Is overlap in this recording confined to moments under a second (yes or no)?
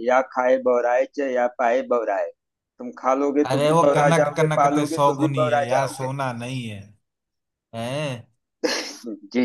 no